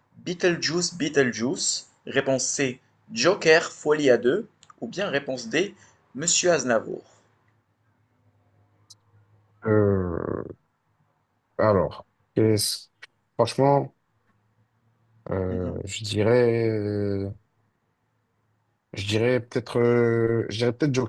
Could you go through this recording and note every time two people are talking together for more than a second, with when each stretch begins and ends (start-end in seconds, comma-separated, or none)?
none